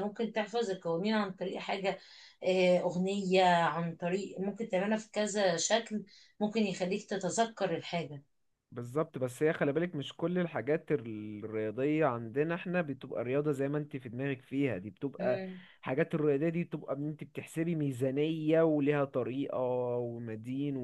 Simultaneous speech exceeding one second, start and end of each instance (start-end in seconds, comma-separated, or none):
none